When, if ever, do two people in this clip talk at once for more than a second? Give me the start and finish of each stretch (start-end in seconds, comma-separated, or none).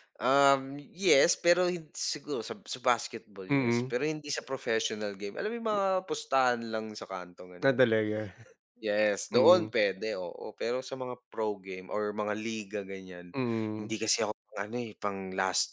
none